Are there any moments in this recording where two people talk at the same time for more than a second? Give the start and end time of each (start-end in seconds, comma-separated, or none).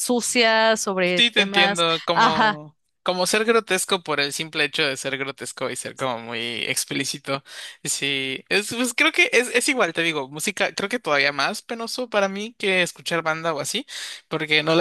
1.2-2.6